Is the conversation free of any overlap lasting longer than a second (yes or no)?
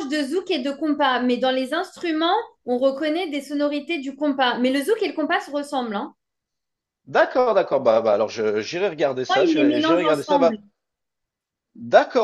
no